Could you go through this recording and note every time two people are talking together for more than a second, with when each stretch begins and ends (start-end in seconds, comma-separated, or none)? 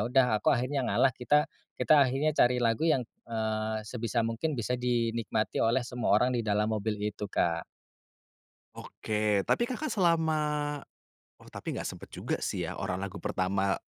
none